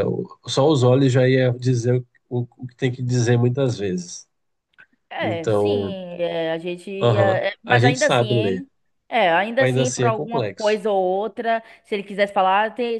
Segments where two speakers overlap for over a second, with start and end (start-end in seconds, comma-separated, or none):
7.0-8.7, 9.6-10.8